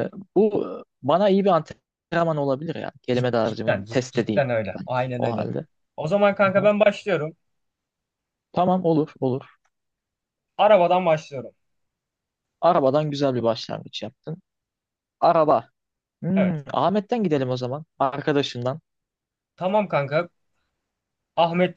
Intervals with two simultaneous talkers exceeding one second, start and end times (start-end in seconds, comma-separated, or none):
3.1-5.5